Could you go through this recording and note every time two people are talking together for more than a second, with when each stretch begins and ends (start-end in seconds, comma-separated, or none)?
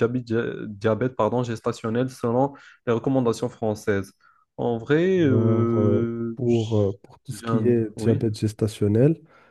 5.3-8.2